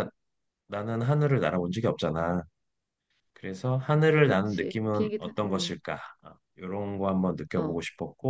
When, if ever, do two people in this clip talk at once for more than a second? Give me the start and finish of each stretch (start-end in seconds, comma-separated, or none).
4.2-5.8